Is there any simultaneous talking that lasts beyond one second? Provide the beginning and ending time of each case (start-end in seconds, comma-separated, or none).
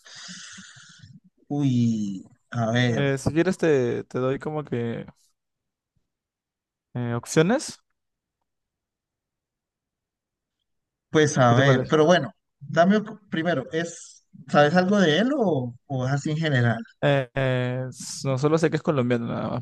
none